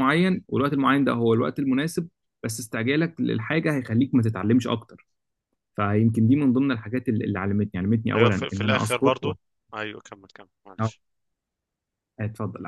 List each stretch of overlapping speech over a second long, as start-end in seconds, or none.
8.1-9.3